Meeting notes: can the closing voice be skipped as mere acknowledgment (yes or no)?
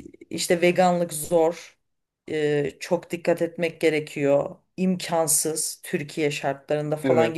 yes